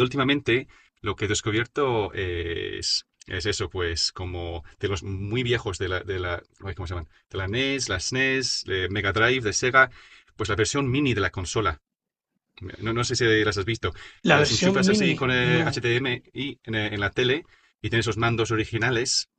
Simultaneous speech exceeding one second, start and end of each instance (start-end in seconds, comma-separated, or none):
14.3-15.8